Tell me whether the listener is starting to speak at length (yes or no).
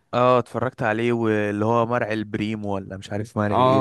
yes